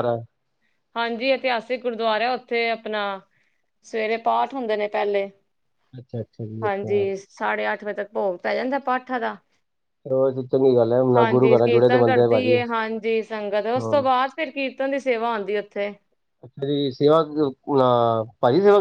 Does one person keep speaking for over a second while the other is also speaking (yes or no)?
yes